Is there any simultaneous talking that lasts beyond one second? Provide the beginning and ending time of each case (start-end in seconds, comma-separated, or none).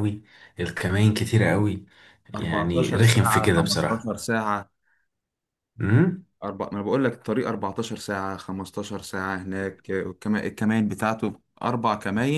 2.4-4.2